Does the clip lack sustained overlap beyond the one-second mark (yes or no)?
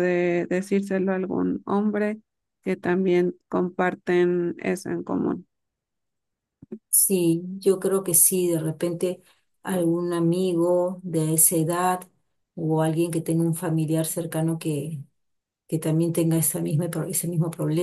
yes